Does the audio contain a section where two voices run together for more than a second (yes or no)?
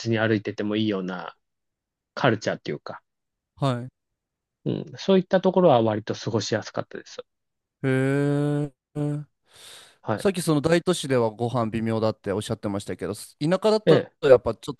no